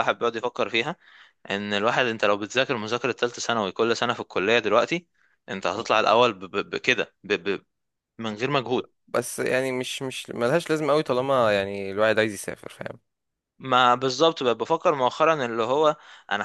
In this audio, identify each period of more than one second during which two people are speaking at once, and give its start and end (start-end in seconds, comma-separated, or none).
none